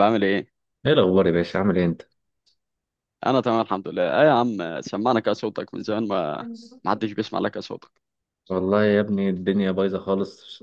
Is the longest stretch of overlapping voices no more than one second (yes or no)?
yes